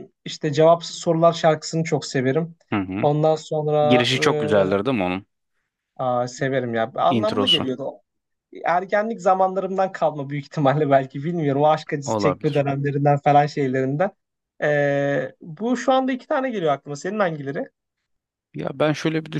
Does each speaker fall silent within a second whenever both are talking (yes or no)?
yes